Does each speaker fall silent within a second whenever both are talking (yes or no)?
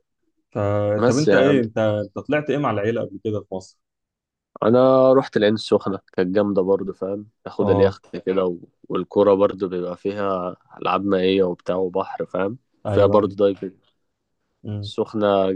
yes